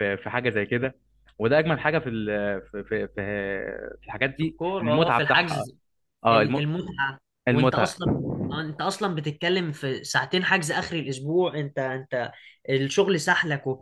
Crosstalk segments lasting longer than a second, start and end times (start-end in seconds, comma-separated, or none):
4.3-5.7